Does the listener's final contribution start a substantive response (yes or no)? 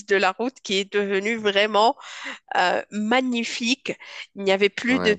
no